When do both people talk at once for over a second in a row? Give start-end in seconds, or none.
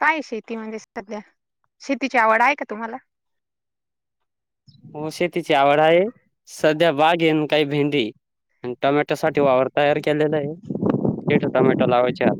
none